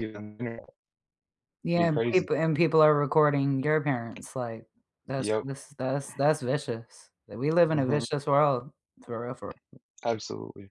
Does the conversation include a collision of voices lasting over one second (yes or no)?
no